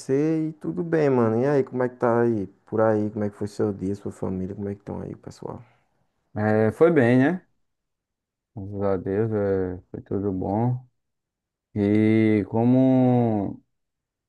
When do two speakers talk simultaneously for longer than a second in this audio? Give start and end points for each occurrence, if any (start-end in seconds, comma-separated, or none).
none